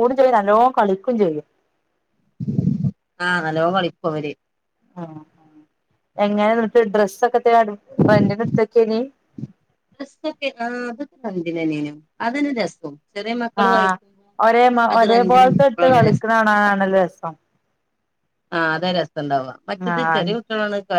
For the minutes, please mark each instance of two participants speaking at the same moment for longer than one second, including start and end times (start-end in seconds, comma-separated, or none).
15.1-16.7